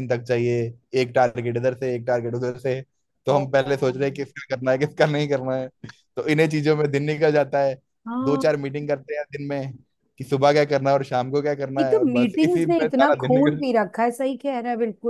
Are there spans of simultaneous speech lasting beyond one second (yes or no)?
yes